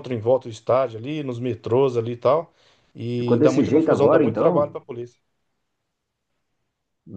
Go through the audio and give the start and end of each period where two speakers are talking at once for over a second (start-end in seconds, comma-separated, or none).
3.1-4.8